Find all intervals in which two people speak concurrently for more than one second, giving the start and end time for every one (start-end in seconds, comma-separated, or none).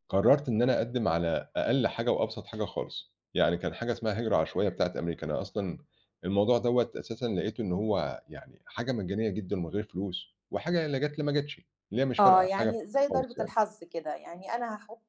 12.2-13.5